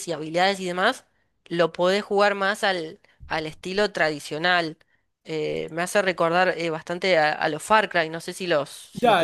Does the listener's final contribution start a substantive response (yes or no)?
yes